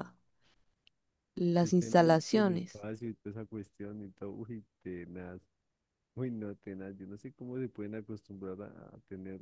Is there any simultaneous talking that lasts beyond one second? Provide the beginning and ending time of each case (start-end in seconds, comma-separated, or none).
1.6-2.8